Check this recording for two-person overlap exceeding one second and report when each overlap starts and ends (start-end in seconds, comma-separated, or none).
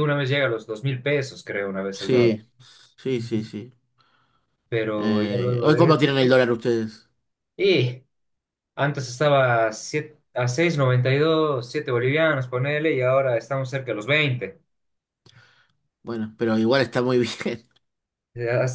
5.0-6.4